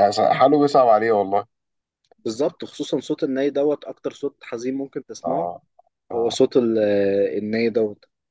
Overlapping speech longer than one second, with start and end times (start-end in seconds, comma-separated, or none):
none